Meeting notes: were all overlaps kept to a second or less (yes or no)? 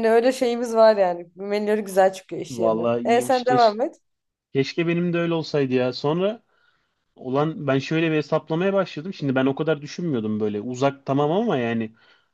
no